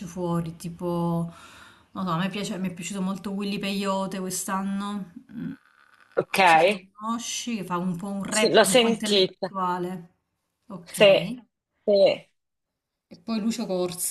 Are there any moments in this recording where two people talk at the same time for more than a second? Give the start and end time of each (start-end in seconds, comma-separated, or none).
8.3-9.5